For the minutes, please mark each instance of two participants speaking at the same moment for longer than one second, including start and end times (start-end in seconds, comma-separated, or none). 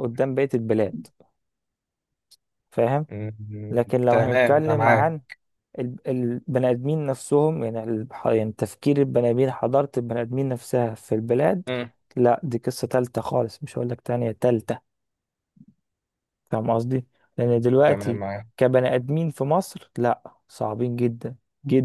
3.7-5.2